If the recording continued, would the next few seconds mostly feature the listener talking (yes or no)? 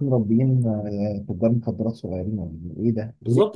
yes